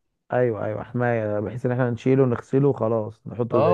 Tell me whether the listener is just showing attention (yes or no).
no